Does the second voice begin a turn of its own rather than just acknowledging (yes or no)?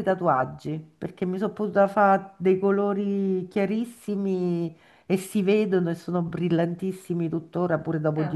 no